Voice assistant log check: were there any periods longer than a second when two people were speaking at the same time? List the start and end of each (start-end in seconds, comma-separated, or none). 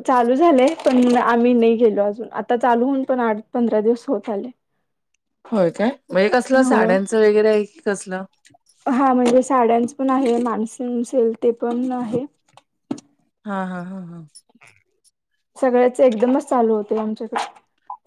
none